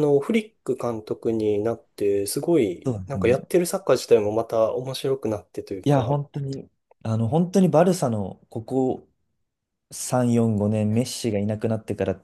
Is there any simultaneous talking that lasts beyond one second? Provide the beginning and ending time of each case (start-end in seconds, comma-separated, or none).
none